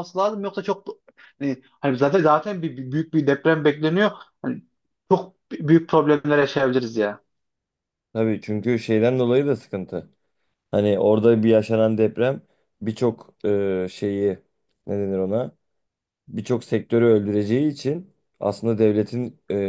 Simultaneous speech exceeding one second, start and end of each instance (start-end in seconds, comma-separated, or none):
none